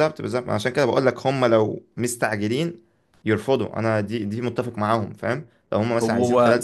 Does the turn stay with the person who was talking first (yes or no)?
yes